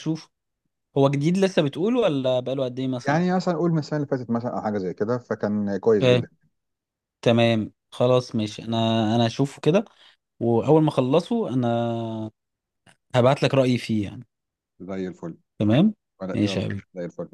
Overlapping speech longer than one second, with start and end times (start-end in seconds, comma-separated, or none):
none